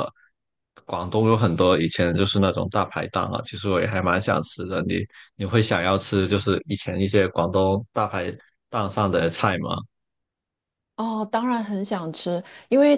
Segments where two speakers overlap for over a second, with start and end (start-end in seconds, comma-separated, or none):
none